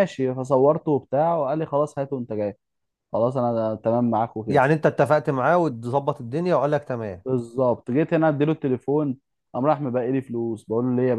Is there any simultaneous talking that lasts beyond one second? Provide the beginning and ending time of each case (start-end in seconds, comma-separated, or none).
none